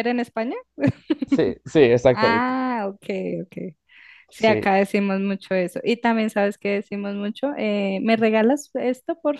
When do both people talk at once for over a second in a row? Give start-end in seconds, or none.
none